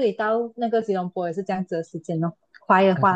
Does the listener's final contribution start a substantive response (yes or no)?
yes